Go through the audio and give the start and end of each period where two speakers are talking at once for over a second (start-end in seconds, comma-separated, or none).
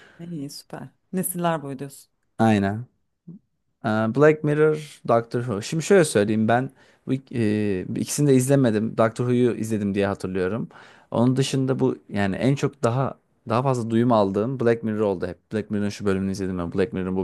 none